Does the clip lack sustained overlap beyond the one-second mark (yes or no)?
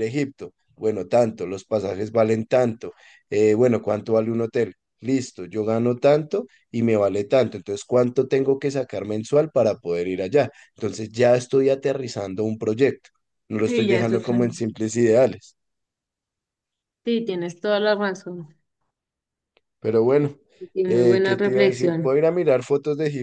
no